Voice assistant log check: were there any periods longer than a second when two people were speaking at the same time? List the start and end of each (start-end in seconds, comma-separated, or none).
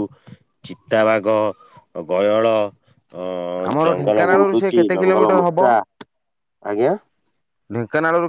3.7-5.6